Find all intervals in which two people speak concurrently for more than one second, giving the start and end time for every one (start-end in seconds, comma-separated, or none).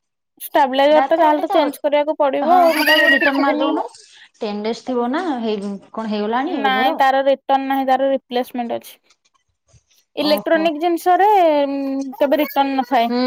1.0-3.7